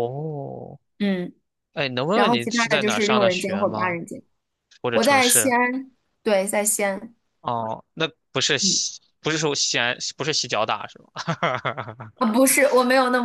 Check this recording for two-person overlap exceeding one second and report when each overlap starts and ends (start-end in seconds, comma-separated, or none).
2.1-4.0